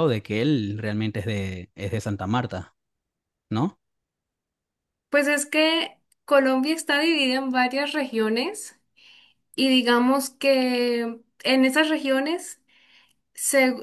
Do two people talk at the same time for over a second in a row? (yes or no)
no